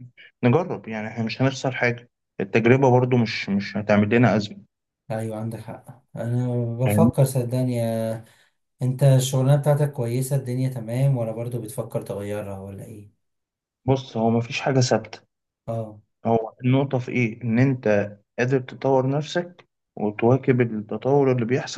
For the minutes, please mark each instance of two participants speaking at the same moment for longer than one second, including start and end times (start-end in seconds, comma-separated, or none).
none